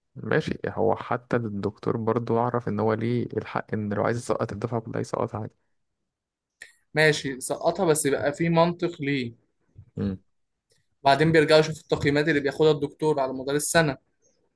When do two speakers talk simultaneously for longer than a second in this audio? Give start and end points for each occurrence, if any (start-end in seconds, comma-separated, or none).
none